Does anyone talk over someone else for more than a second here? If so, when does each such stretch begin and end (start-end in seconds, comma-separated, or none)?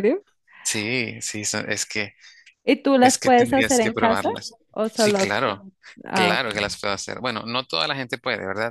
3.0-4.3